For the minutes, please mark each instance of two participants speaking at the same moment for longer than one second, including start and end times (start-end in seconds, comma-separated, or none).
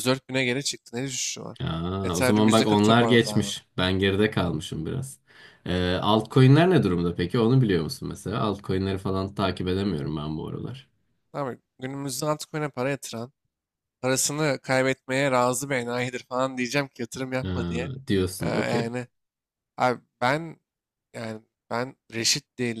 2.0-3.6